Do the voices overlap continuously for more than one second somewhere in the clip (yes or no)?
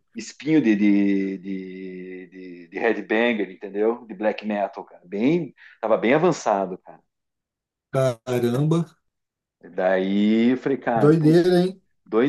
no